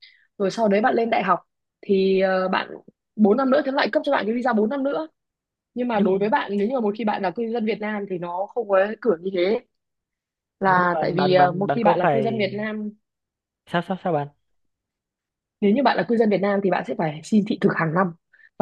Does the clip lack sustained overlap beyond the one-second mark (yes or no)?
no